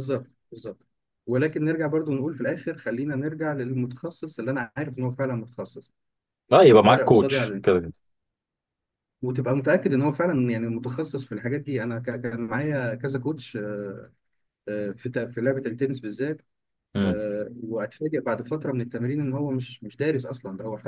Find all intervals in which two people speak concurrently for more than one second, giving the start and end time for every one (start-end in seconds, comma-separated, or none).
6.7-7.9